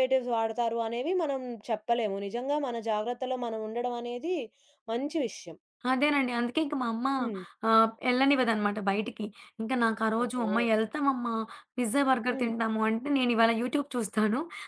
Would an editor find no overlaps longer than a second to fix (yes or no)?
yes